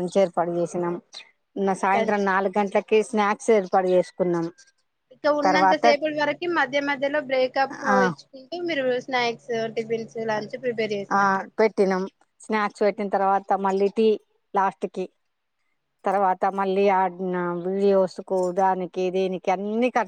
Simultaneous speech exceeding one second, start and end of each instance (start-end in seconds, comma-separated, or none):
none